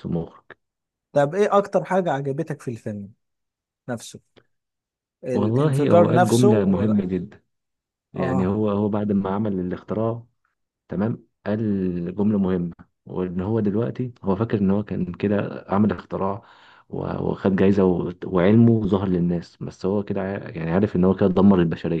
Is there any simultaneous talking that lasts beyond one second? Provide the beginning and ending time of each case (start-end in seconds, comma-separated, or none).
5.3-7.0